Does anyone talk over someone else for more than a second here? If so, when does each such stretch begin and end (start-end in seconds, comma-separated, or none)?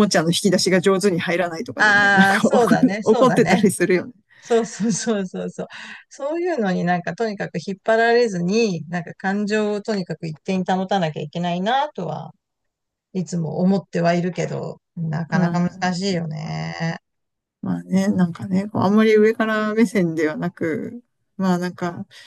1.8-3.6